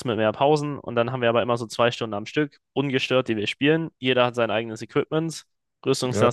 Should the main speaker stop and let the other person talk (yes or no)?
no